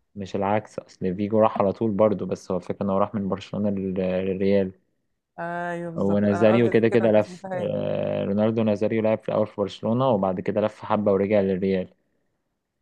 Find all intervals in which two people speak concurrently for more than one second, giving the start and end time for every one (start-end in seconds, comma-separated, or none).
6.0-7.7